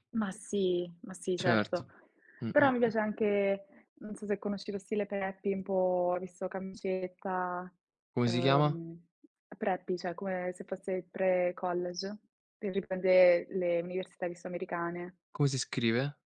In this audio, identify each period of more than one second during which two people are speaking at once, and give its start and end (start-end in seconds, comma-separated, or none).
none